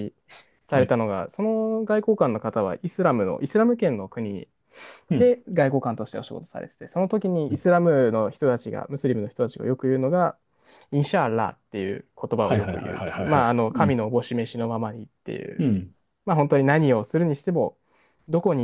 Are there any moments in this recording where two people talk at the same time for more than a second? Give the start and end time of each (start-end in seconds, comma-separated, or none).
12.4-14.0